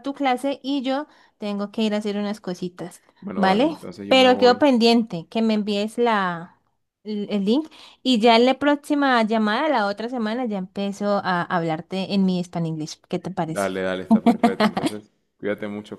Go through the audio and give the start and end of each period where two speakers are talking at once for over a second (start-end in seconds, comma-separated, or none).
3.2-4.7